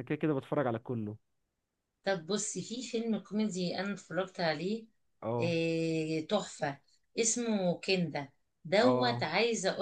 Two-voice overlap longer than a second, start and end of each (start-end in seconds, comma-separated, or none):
none